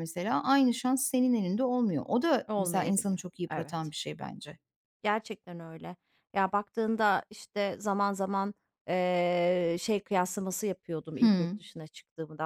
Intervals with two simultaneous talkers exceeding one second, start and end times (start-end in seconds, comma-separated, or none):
2.5-3.9